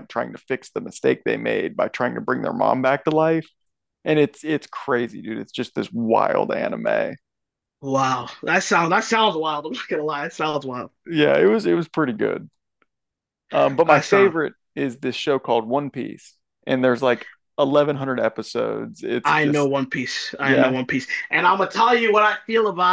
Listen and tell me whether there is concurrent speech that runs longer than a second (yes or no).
no